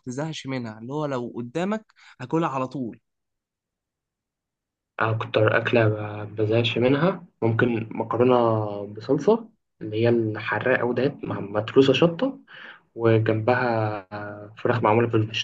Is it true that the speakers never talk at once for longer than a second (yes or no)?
yes